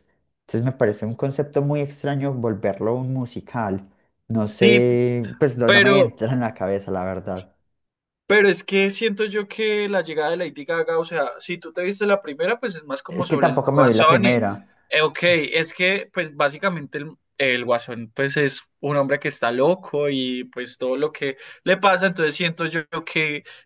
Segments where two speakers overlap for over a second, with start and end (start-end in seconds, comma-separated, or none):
13.1-14.4